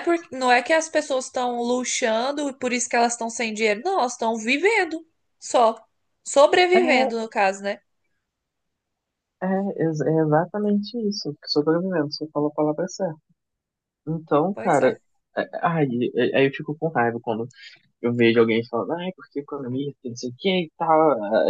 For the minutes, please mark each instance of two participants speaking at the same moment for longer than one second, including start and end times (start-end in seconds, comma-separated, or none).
none